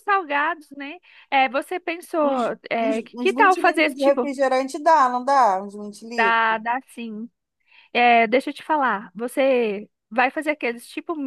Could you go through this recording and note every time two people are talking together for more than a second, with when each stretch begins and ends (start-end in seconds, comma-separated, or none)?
2.2-4.3